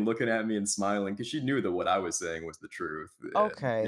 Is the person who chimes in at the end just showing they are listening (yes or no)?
no